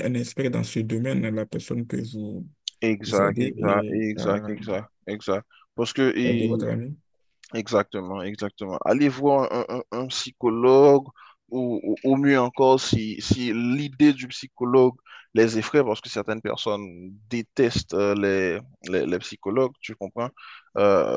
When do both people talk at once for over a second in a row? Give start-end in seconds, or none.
3.1-4.6